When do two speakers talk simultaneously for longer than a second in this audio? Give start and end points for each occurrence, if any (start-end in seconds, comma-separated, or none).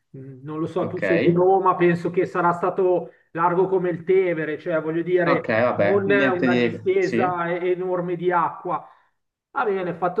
5.2-7.3